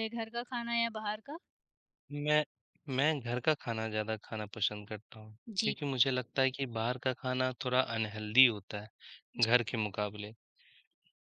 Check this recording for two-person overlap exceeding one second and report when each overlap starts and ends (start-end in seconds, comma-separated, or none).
none